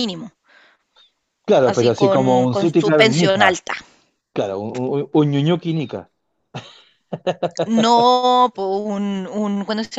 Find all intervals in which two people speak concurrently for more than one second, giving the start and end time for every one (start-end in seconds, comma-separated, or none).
1.6-3.6